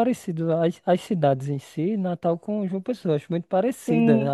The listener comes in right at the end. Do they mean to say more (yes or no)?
yes